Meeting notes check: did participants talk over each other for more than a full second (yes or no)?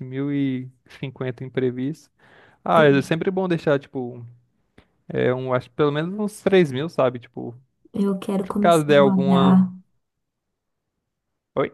yes